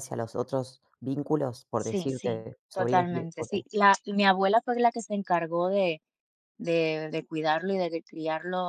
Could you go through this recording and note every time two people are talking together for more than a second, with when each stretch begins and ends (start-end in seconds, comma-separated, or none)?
1.8-3.5